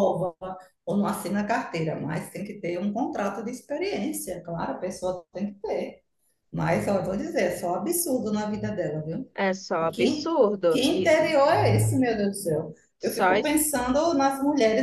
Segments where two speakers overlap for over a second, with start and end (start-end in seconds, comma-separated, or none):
9.9-11.3